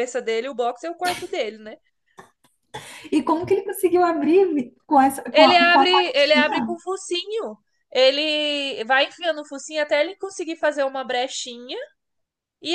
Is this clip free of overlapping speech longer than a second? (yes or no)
no